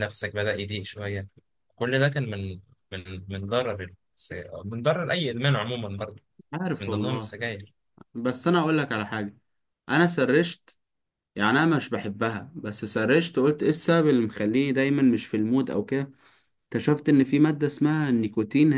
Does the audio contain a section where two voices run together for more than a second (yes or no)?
no